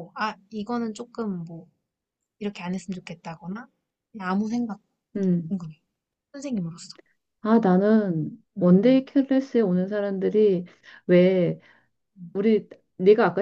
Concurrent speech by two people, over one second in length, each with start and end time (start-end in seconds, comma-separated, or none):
none